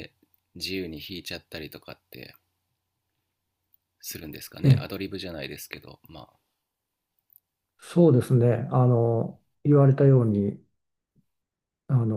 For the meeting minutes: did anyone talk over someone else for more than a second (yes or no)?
no